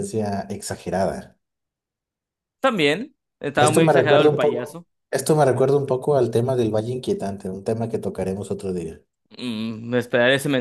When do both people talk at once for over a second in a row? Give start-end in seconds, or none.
3.6-4.9